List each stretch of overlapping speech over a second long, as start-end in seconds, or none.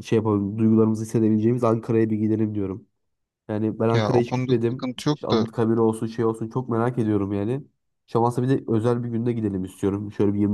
3.9-5.4